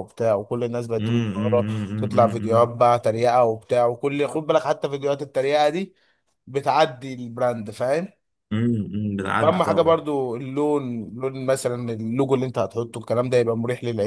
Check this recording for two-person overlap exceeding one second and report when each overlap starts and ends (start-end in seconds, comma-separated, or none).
1.0-2.7